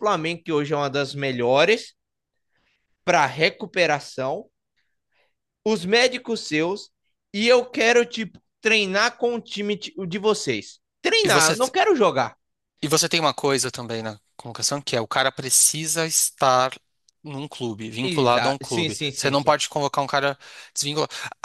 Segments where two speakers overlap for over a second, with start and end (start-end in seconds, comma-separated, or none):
18.0-19.6